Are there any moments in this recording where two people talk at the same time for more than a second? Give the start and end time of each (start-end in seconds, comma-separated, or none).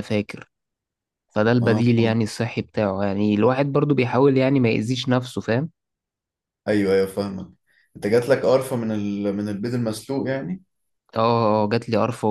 none